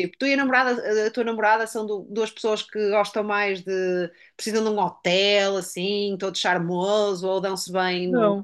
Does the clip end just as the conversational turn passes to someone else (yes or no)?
yes